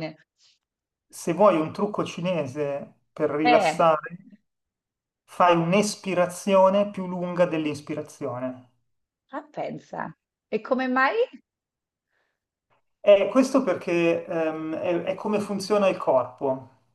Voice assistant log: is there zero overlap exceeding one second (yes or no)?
yes